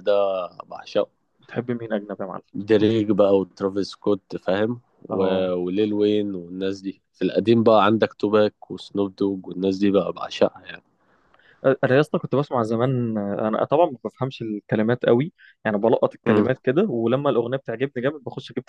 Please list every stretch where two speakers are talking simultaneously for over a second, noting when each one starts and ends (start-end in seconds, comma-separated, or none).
none